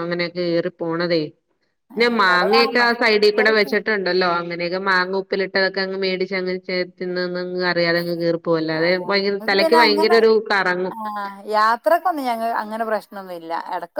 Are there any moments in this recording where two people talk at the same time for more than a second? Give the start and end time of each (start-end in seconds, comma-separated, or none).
2.2-3.7